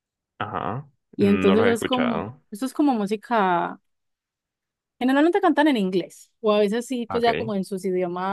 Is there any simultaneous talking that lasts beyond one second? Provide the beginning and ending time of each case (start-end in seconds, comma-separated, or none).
1.1-2.4